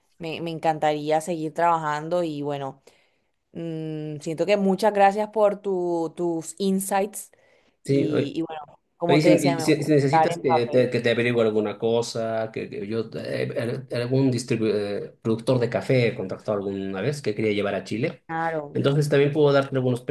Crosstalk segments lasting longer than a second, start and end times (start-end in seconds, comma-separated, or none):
9.1-10.9